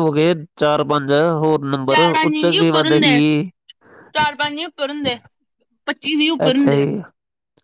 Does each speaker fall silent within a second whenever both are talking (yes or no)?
no